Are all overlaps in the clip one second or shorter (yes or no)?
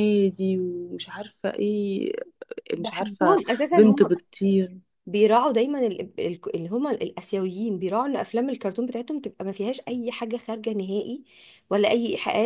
no